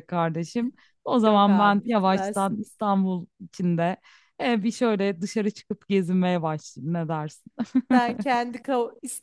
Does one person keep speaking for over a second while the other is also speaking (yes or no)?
yes